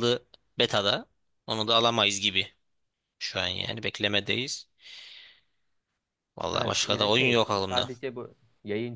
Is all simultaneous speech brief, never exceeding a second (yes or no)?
no